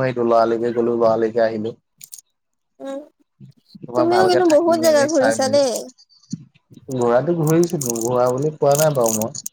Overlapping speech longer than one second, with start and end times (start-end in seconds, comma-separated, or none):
4.0-5.7